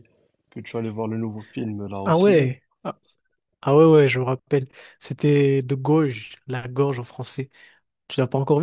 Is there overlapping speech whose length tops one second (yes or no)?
no